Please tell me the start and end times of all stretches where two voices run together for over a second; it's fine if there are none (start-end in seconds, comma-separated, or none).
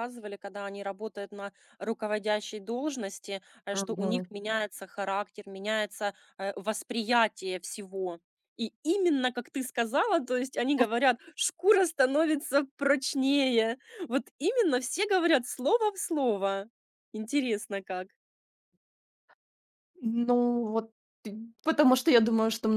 none